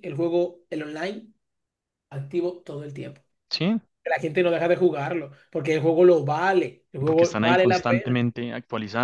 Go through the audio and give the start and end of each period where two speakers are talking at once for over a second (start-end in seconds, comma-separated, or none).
7.0-8.2